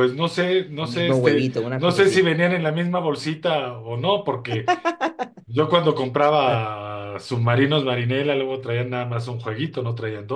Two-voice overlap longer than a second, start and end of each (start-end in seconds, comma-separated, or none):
0.8-2.3